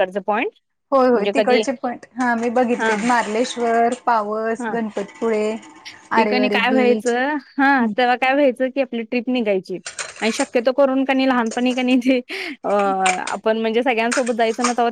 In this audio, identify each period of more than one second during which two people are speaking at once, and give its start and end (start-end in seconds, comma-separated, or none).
none